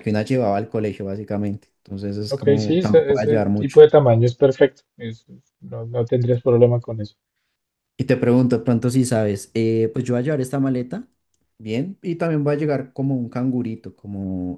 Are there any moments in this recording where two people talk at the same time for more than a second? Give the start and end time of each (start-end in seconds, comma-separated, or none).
2.3-3.8